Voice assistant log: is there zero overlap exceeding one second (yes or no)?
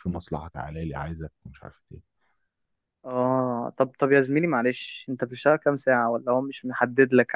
yes